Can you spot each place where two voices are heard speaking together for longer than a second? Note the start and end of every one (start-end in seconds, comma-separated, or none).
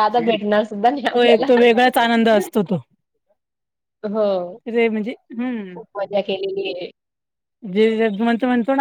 none